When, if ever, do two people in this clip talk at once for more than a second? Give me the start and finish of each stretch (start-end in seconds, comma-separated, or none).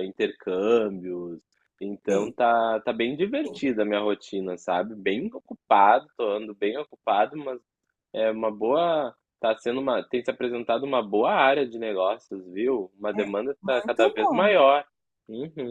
13.1-14.5